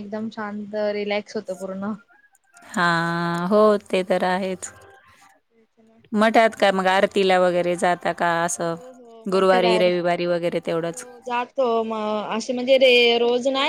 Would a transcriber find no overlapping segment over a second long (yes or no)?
no